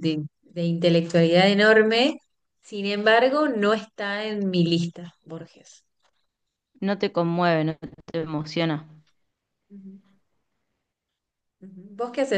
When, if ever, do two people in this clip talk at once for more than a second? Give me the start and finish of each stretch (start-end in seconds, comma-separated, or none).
none